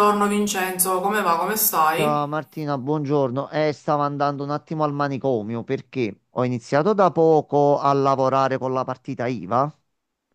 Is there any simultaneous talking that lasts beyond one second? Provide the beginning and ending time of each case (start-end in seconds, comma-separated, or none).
none